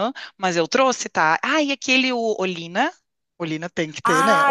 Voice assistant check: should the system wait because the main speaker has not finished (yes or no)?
no